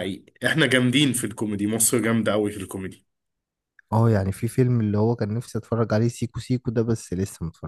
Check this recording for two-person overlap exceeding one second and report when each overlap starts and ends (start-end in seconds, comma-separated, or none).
none